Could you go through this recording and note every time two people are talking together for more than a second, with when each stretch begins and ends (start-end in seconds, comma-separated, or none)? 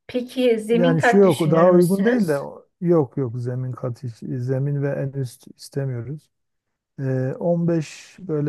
0.7-2.4